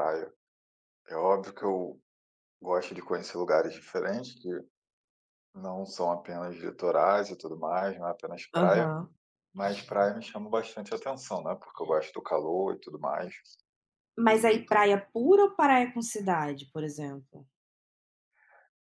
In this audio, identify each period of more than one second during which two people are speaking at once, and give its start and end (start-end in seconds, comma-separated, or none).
none